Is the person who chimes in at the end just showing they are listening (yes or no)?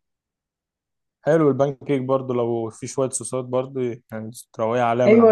no